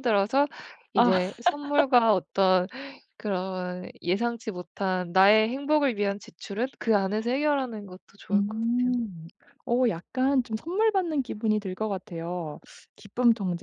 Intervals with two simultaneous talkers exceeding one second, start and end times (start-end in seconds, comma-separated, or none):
none